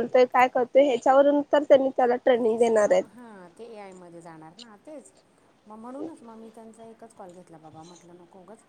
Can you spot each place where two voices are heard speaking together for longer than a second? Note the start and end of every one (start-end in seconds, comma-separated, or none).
none